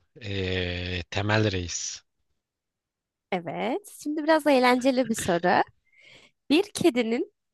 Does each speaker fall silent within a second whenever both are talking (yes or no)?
yes